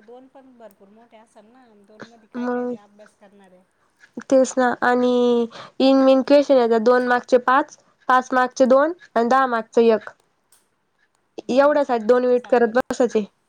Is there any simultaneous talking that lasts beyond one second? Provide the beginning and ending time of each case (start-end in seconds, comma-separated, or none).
11.5-12.8